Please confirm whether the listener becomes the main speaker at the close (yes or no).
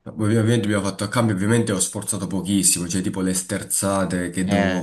no